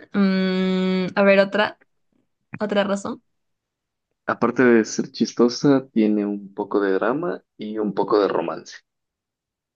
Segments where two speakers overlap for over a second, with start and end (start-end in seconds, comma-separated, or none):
none